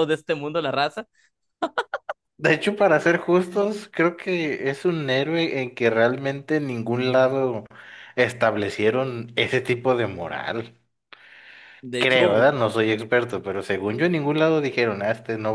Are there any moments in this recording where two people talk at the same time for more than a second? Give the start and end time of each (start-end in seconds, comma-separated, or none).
none